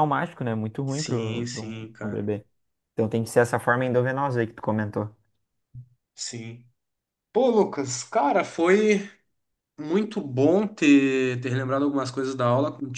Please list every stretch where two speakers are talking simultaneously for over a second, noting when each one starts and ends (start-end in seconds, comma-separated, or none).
0.9-2.3